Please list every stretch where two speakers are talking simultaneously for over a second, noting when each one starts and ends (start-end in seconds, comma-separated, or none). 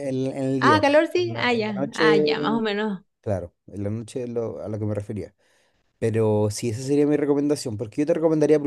0.6-2.4